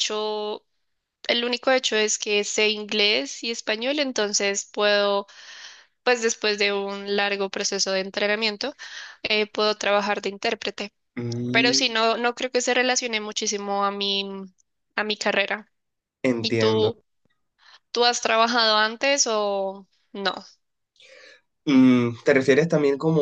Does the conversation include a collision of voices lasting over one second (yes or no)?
no